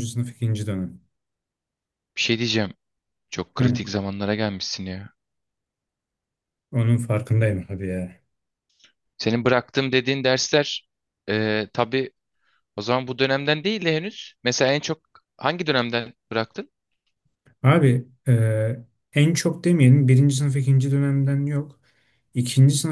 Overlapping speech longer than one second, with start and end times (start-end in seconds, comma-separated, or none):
none